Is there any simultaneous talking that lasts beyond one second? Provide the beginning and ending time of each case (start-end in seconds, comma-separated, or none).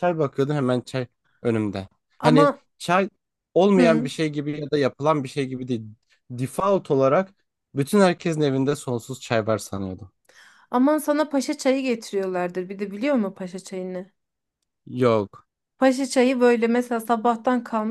none